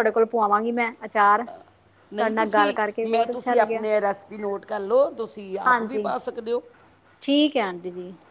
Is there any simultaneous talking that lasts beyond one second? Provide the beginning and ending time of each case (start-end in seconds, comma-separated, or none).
2.1-3.9